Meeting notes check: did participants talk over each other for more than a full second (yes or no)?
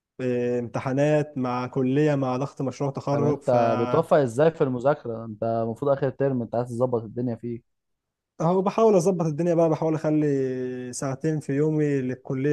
no